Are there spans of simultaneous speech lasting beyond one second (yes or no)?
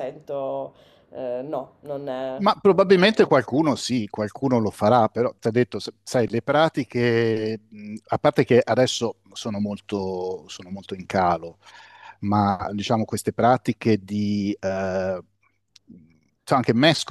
no